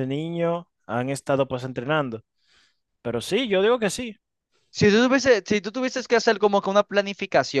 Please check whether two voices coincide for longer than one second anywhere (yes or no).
no